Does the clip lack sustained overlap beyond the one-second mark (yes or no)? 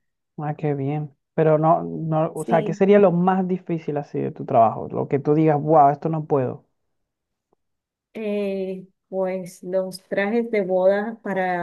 yes